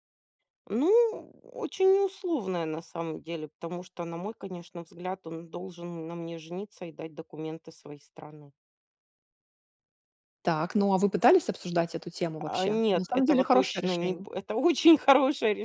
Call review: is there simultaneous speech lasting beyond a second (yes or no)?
yes